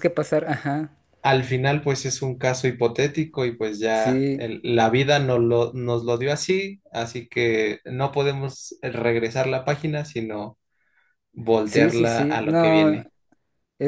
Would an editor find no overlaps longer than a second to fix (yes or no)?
no